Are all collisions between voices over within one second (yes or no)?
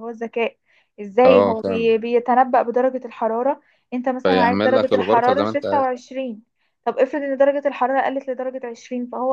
no